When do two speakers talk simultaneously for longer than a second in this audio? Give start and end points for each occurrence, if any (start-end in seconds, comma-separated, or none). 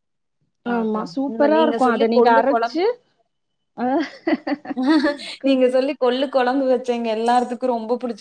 0.8-2.8